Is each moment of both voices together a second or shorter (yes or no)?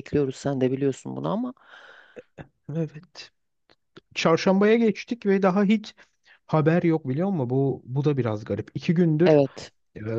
yes